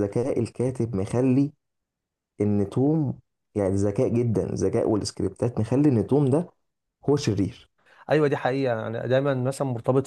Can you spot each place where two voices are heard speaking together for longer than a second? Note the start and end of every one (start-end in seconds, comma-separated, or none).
none